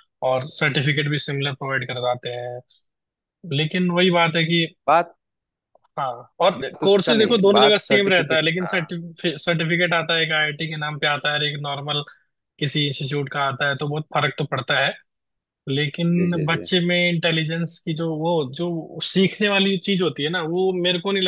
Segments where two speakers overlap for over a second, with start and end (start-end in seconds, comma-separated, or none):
6.6-8.9